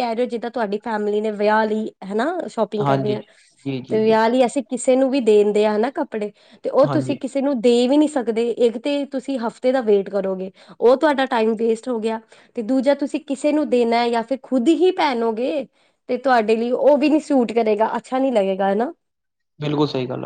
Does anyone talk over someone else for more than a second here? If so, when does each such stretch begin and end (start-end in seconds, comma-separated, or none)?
none